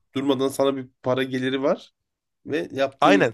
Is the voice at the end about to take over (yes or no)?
yes